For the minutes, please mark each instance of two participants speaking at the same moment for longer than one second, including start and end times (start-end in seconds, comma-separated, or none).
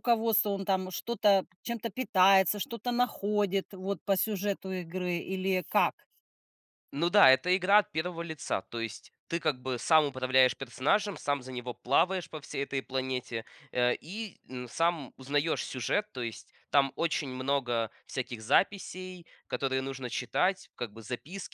none